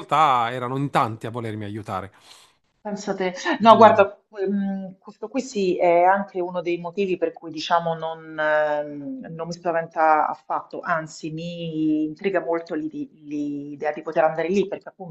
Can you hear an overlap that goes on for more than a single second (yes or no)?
no